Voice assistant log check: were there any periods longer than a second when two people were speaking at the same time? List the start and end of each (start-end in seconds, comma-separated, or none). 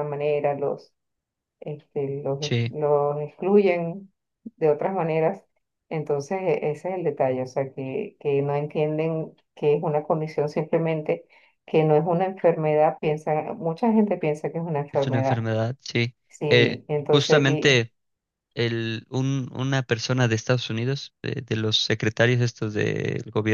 16.3-17.9